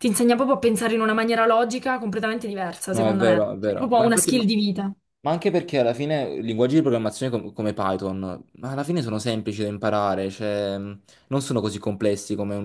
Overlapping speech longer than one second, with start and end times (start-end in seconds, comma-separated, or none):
2.9-4.5